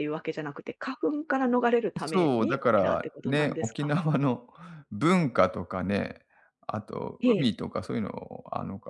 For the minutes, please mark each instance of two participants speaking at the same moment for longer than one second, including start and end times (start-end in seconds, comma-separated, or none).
2.0-4.0